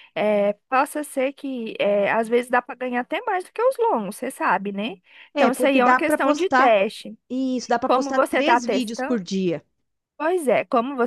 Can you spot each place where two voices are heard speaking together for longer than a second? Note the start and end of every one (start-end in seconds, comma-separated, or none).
5.3-6.8, 7.8-9.2